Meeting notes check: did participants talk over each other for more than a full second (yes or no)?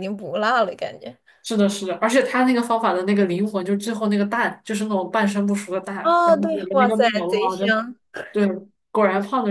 yes